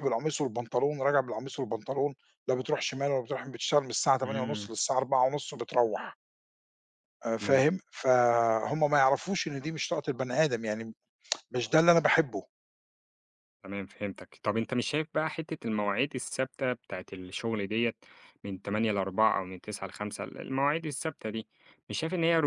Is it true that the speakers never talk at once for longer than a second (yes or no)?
yes